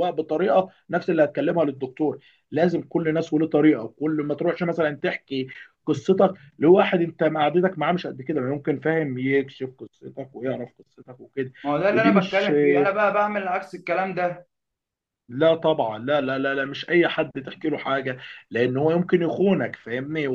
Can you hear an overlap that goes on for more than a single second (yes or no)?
no